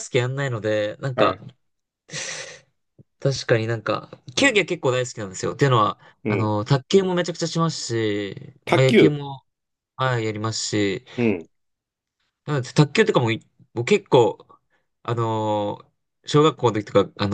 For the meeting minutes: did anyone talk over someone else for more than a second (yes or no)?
no